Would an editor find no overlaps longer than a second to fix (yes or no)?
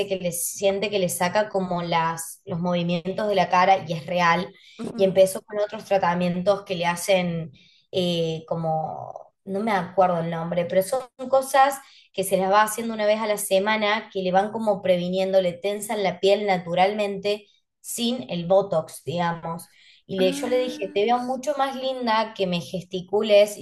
no